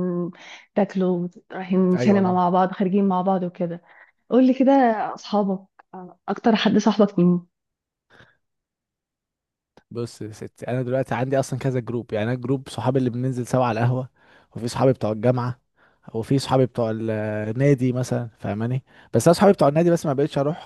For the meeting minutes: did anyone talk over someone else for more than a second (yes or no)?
no